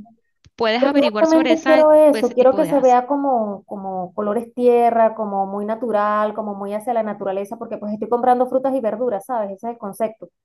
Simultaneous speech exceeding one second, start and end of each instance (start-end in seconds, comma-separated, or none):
0.8-3.0